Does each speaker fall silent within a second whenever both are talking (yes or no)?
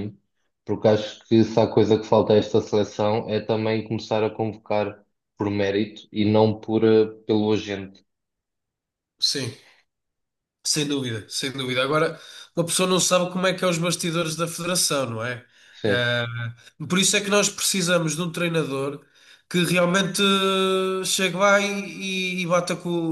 yes